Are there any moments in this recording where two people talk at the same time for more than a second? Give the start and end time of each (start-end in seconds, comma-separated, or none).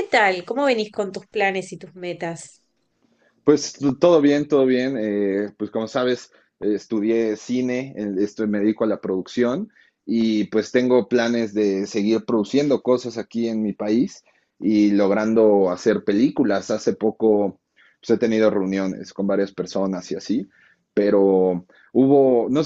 none